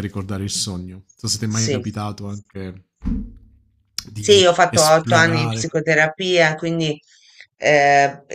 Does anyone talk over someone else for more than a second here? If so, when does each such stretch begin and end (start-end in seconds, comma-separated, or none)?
4.2-5.7